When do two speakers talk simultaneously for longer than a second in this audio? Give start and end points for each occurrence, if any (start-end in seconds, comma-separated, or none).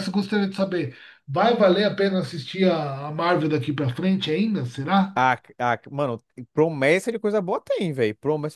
none